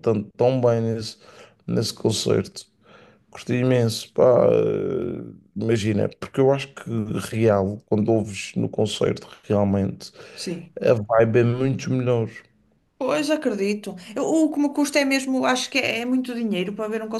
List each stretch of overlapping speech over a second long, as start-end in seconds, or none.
none